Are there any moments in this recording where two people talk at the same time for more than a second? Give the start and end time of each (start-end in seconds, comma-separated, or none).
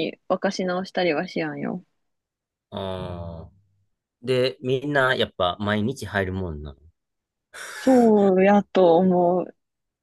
none